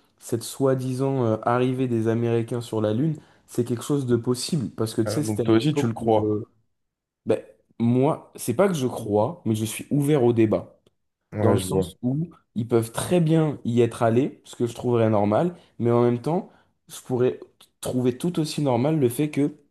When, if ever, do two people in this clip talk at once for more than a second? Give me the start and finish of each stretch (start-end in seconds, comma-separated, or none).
5.0-6.4